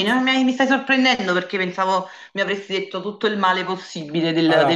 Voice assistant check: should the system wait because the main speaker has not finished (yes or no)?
no